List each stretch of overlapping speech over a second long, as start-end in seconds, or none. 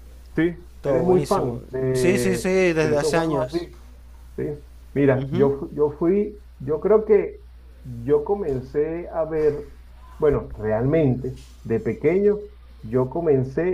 0.8-3.7